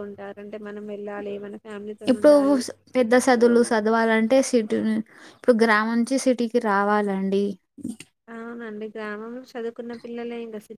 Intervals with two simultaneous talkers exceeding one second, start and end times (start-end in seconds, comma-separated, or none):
none